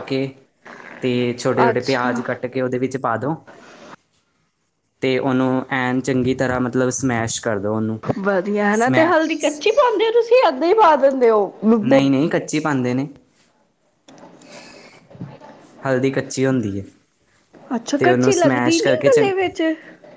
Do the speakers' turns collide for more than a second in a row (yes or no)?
yes